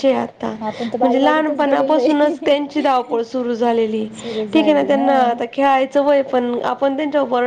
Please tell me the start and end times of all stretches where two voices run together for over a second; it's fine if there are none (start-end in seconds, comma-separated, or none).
1.0-3.2